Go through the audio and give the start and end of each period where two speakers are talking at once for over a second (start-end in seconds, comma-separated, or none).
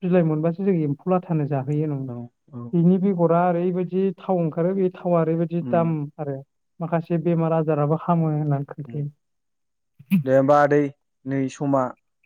none